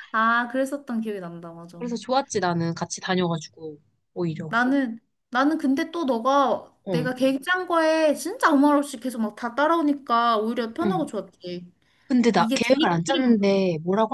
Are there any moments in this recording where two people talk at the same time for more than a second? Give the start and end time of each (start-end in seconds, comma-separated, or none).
12.4-13.6